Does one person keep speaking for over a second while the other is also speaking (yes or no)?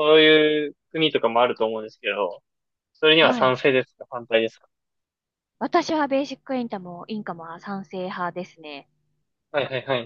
no